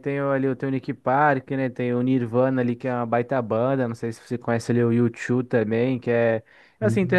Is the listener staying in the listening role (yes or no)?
yes